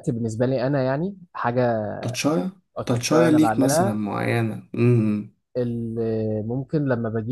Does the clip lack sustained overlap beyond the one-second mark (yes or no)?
no